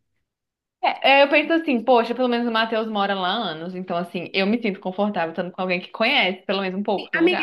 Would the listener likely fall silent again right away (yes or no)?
no